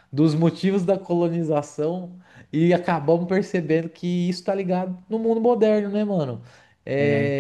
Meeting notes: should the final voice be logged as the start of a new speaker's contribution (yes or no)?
no